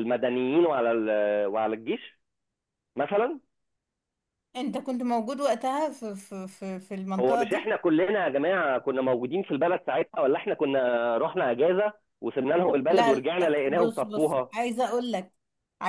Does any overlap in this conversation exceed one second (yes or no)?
yes